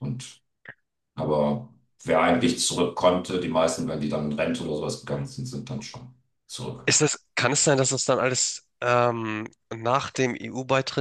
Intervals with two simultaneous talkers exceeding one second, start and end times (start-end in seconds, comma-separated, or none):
none